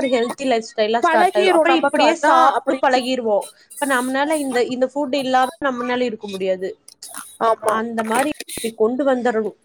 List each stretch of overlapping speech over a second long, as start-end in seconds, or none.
1.0-3.0